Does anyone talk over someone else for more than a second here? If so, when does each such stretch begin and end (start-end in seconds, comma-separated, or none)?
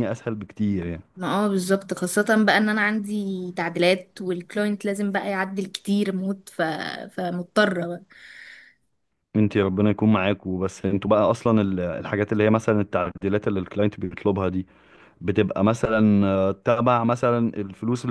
none